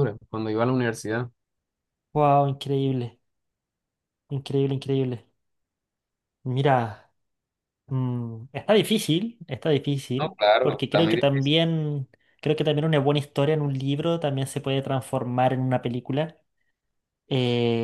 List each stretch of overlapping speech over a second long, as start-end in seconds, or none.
10.2-11.5